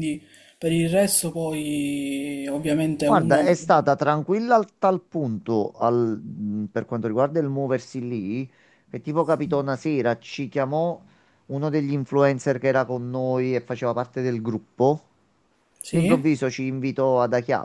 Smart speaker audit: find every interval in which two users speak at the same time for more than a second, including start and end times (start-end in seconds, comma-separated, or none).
none